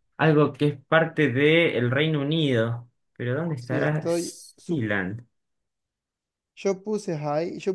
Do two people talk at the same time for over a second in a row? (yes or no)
yes